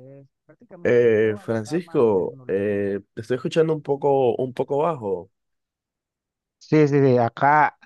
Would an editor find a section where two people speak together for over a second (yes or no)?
yes